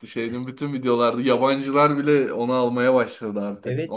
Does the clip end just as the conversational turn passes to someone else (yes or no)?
yes